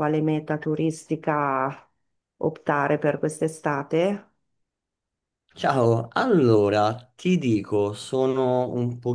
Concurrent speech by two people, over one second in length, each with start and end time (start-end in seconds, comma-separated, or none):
none